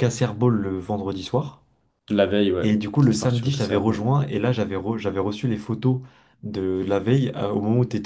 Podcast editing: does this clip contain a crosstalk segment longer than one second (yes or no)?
yes